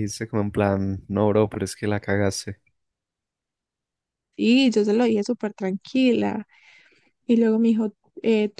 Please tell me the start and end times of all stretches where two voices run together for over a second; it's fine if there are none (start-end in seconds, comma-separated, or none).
none